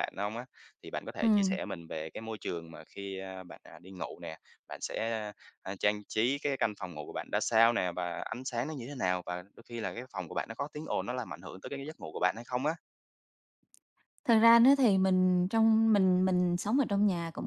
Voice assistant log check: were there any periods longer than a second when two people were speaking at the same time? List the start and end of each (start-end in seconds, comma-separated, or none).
none